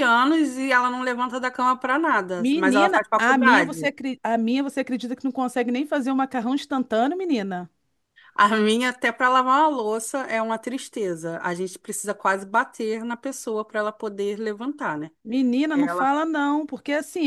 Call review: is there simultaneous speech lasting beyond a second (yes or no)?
yes